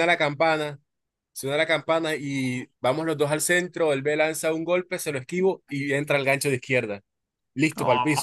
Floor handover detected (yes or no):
yes